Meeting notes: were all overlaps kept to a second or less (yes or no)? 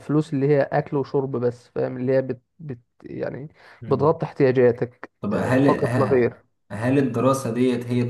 no